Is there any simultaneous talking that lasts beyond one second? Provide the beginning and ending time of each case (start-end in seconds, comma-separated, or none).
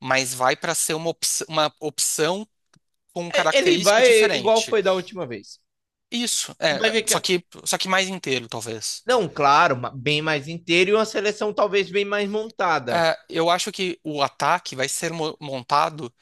3.3-4.8